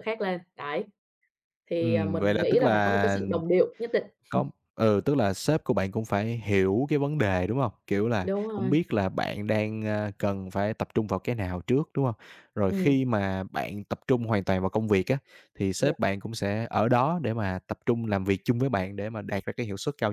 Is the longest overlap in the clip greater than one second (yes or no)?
yes